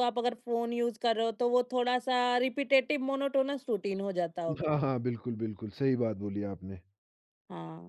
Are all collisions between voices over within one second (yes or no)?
yes